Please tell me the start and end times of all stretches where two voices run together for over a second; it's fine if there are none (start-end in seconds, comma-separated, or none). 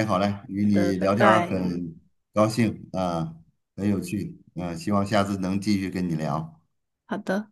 0.6-1.8